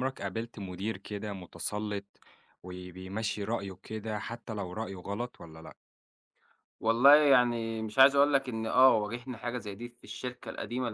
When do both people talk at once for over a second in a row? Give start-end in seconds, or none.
none